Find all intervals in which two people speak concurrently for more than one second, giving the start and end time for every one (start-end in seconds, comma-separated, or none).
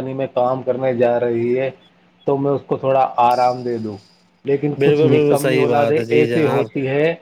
4.8-6.7